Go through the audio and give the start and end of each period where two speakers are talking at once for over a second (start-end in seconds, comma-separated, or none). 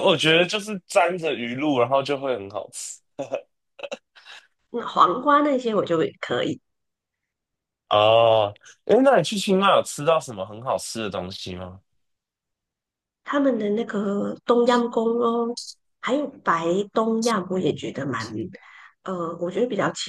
none